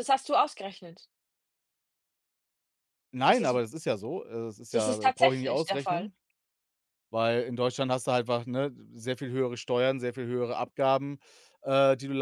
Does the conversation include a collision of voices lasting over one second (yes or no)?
yes